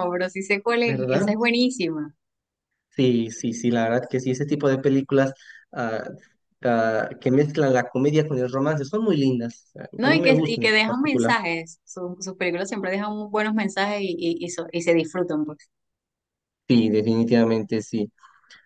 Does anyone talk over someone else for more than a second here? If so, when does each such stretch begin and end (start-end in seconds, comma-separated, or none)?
10.0-11.3